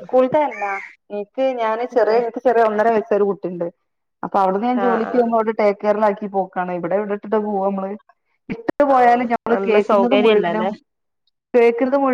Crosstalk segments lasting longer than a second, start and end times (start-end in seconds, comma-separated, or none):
9.0-10.7